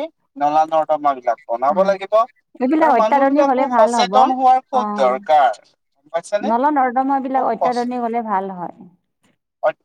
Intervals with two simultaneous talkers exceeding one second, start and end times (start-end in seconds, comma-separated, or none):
2.6-4.1